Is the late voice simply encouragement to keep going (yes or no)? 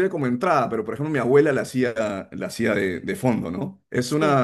yes